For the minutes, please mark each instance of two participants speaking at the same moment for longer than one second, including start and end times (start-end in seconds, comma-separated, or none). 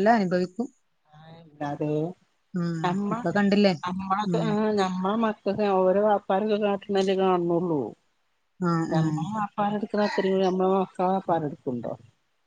none